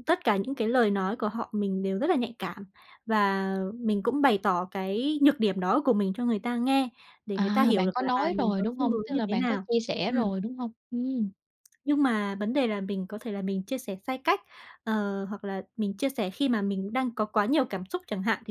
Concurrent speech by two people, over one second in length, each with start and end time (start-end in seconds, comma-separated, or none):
7.3-9.7